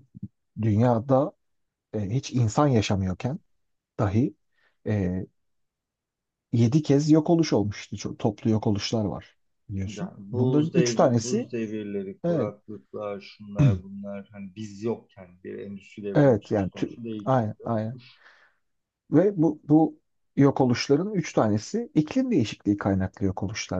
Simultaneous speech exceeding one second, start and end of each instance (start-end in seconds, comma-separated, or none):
9.8-11.5, 16.1-18.0